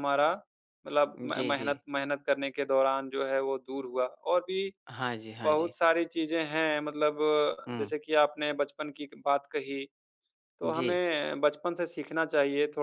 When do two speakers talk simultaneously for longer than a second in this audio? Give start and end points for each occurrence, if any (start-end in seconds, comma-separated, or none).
none